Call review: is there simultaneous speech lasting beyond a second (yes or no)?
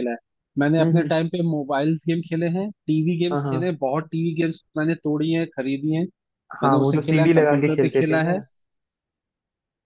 yes